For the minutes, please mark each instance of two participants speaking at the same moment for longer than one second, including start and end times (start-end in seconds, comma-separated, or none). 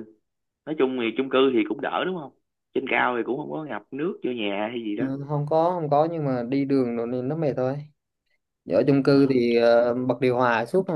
none